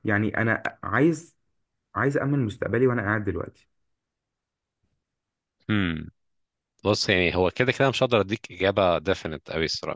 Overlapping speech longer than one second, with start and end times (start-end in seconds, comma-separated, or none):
none